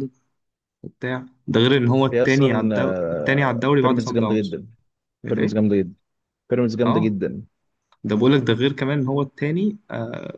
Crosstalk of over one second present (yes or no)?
yes